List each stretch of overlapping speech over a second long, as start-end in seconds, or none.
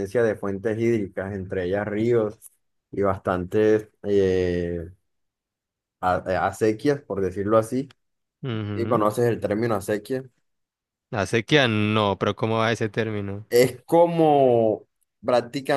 none